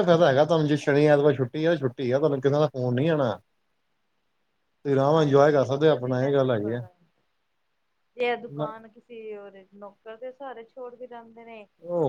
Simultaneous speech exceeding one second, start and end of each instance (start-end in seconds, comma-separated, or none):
5.1-6.8